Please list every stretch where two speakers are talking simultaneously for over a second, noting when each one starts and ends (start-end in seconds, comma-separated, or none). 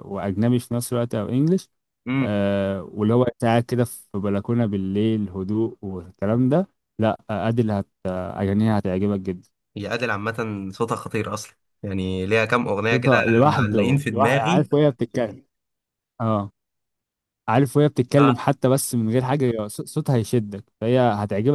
12.9-14.7